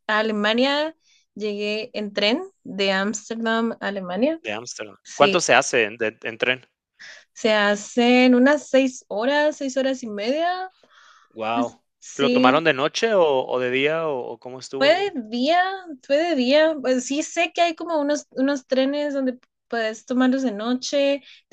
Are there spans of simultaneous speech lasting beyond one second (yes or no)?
no